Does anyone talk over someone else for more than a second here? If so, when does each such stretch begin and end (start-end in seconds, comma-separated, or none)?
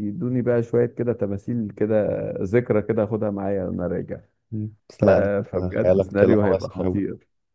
5.8-7.0